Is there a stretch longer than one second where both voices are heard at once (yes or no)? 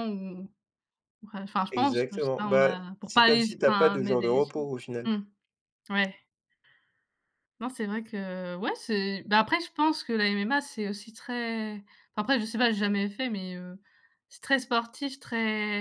yes